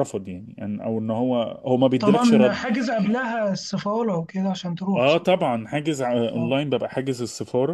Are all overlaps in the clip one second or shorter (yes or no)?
yes